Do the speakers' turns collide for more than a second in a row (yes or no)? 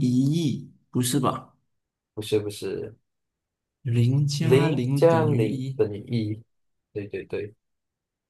yes